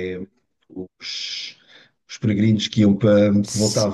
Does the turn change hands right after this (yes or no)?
no